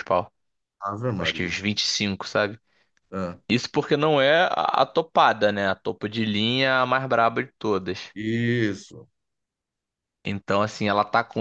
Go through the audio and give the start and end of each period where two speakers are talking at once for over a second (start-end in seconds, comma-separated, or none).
none